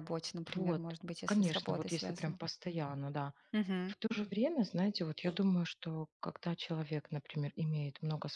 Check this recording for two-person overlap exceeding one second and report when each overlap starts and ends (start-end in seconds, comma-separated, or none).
0.6-2.4